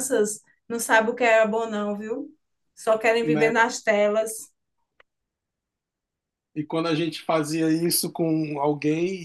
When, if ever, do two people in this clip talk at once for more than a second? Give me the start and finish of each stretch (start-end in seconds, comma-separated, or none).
none